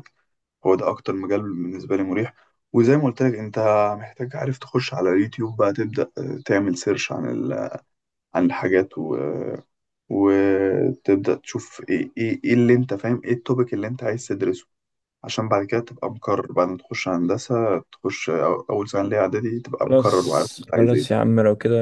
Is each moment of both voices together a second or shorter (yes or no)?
no